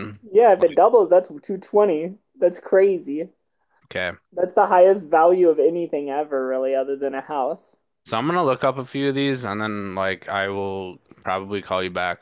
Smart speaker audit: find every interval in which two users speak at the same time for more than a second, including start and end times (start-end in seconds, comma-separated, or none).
none